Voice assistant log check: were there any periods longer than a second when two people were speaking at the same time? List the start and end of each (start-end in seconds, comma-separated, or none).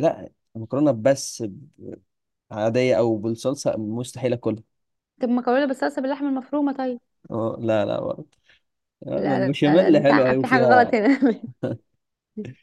9.2-11.0